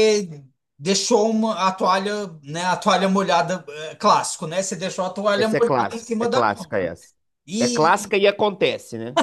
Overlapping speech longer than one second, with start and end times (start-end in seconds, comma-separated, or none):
5.3-6.7